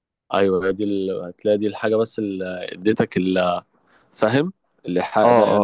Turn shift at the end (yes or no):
yes